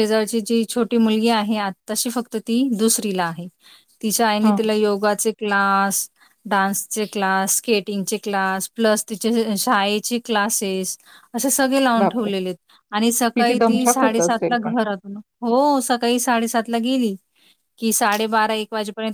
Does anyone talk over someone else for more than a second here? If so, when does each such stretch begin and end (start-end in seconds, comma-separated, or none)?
13.3-14.7